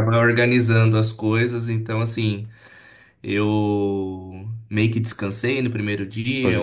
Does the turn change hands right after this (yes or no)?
no